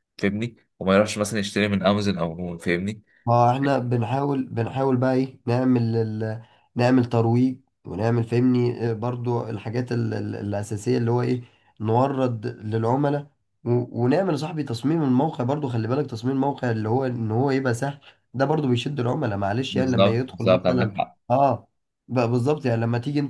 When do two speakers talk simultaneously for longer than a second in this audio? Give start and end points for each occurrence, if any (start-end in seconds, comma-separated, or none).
19.7-20.9